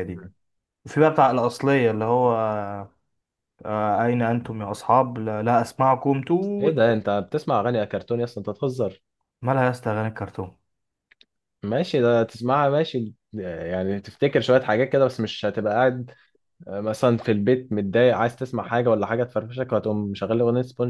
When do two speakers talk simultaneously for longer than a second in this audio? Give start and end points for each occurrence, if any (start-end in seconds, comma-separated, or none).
none